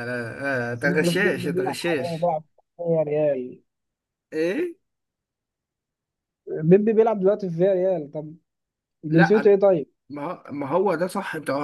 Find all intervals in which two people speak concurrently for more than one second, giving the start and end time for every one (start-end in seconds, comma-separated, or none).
0.7-2.3